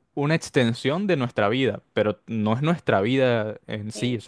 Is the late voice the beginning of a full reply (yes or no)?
no